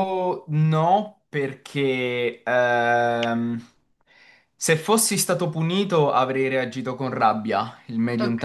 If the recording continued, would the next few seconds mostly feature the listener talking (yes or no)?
no